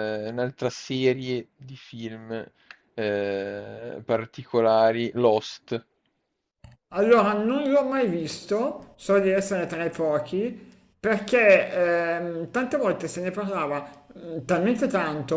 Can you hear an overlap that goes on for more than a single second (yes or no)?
no